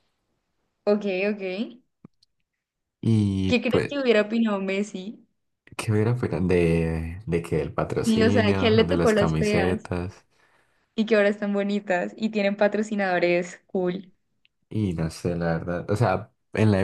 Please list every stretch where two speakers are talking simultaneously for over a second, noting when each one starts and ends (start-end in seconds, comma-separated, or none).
8.0-9.9